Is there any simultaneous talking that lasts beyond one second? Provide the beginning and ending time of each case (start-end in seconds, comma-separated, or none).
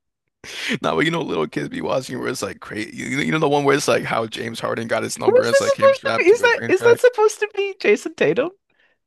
5.2-7.0